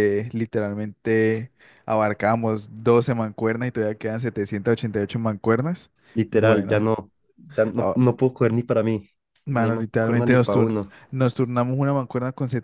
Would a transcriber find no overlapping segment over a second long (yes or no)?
no